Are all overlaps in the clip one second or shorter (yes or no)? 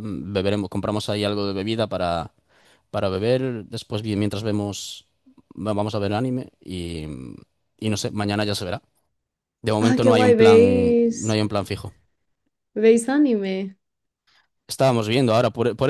no